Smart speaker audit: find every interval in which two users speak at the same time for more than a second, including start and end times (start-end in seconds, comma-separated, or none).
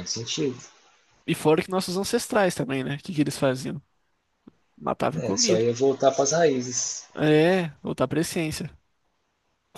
none